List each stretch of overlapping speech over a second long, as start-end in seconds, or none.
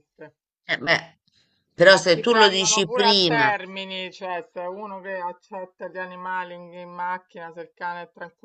1.9-3.5